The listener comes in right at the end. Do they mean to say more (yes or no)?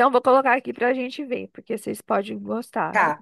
yes